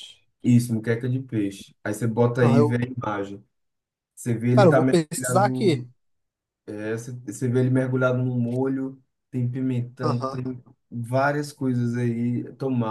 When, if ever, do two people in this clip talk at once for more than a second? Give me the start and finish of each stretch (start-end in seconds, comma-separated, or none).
4.5-5.9